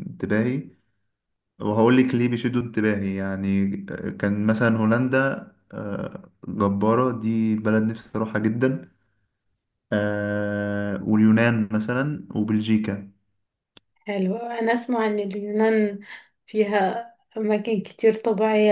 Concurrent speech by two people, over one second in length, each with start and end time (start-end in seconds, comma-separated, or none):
none